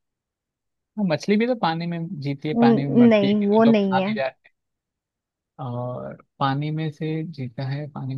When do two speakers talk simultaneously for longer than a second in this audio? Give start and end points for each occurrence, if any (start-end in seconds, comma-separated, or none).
2.5-4.2